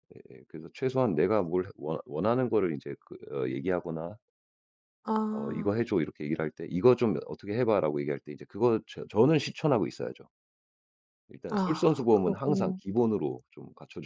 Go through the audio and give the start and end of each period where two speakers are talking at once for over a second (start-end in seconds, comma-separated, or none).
11.5-12.8